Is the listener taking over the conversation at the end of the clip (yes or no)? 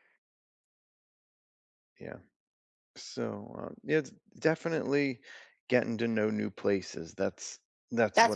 yes